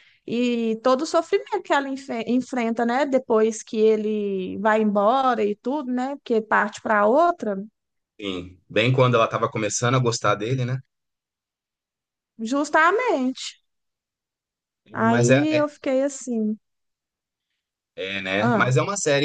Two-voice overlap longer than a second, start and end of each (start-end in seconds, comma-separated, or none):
none